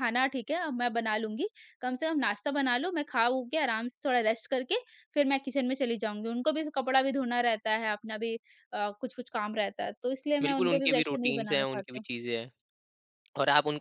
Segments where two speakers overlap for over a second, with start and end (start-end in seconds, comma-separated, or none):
10.4-12.1